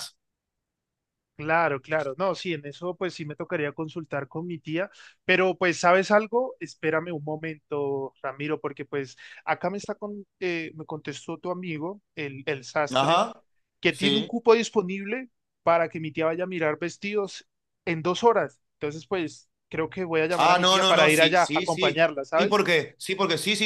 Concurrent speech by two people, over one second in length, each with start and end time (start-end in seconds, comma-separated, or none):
20.4-22.7